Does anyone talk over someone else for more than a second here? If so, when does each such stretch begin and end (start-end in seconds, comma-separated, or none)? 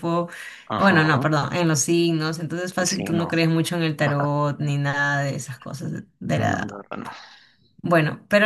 none